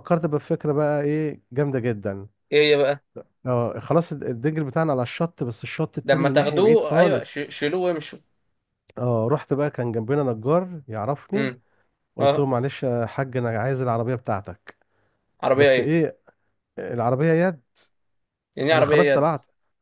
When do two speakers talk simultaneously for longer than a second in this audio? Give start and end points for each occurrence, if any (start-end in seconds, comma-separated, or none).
6.0-7.3